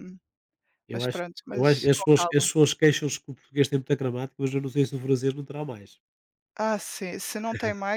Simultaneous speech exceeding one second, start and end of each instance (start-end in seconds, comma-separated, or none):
0.9-2.5